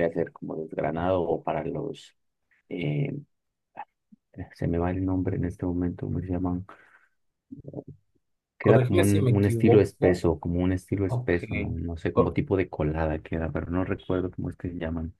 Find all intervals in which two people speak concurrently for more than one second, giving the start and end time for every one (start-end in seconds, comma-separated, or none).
8.6-10.2